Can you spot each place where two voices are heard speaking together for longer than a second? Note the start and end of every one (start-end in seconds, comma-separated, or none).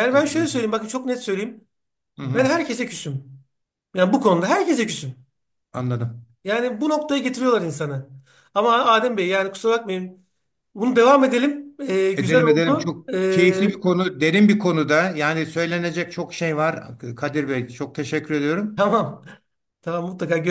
12.2-13.8